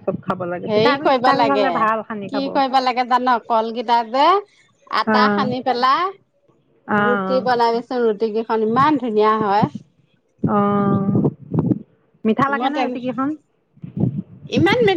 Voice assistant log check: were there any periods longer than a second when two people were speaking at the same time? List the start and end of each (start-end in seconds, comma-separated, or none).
none